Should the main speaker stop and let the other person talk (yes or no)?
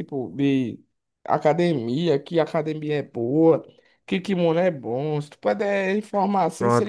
yes